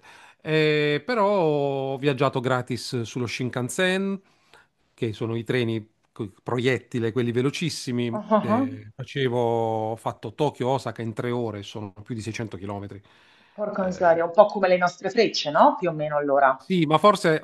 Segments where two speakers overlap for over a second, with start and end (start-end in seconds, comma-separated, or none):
none